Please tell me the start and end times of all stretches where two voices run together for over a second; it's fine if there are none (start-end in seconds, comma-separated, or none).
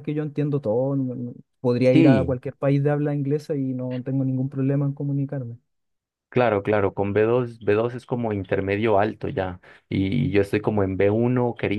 none